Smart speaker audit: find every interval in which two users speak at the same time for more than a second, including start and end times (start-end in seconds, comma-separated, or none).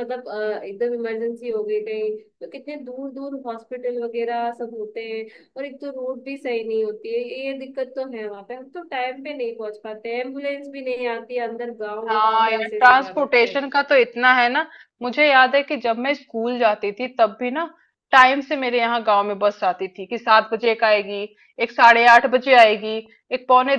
12.1-13.7